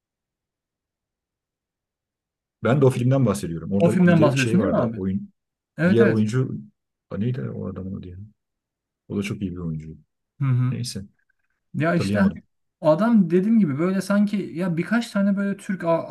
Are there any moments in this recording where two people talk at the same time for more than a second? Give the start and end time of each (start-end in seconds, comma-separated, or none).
3.8-5.0